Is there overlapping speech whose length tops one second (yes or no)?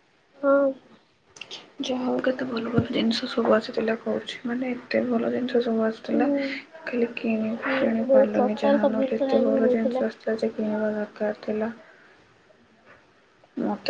yes